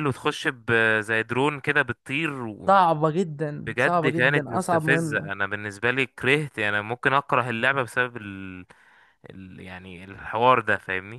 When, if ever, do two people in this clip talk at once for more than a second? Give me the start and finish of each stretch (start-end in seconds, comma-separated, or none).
3.7-5.3